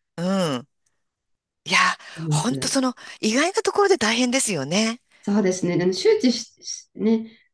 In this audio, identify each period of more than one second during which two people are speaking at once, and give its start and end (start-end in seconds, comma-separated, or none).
none